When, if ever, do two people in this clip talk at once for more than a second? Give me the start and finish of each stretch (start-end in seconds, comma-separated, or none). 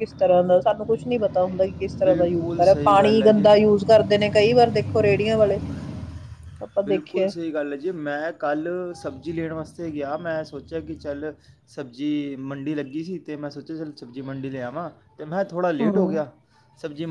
2.0-3.5